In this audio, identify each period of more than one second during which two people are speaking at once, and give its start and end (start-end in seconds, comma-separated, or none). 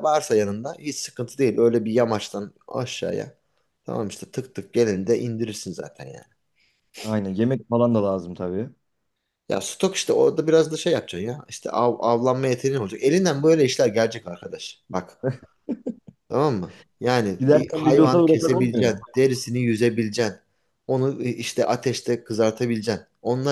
17.4-19.0